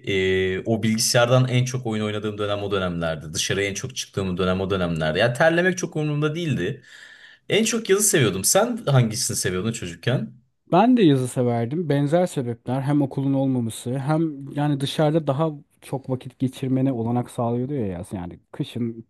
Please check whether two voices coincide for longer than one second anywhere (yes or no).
no